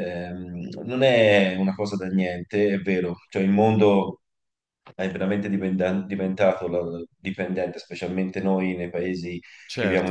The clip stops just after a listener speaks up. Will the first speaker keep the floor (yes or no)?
no